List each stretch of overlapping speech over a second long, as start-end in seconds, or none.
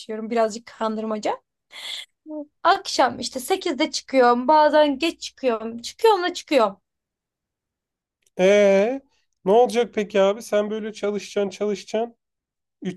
none